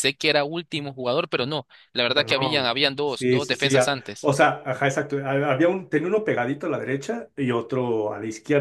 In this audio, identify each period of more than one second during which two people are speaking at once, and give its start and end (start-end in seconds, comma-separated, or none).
2.1-4.3